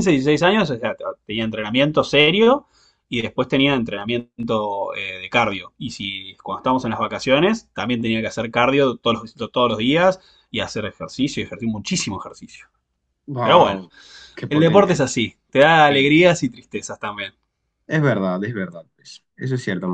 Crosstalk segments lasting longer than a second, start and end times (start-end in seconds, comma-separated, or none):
none